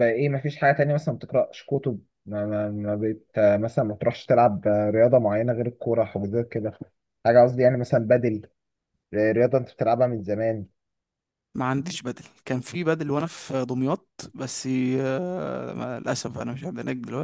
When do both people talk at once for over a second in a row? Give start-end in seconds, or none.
none